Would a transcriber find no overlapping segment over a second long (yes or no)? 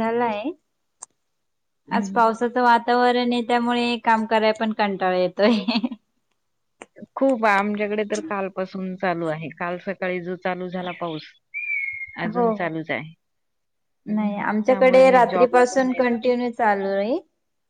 no